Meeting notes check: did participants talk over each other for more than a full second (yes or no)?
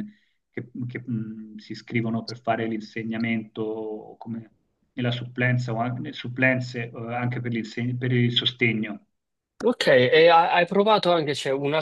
no